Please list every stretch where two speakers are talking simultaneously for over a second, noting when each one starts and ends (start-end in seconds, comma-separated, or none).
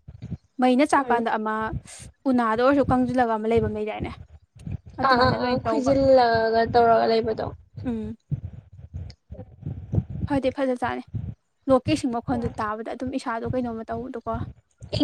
none